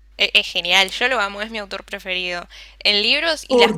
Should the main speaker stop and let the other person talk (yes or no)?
no